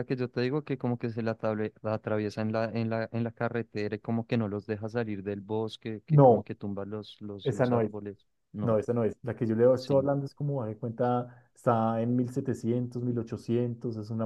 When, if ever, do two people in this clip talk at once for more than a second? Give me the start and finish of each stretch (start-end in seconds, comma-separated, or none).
none